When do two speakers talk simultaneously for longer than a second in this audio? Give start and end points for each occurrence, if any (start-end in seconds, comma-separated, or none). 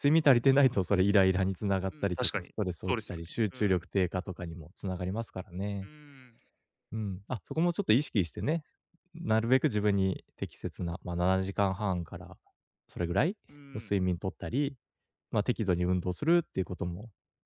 1.9-3.9